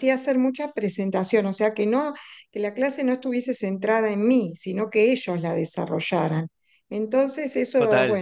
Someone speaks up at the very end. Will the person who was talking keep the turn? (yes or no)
yes